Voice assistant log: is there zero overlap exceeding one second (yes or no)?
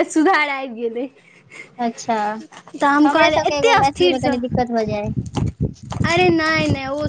no